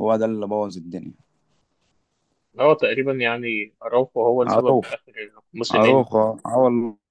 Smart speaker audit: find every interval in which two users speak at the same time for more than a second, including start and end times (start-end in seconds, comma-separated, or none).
none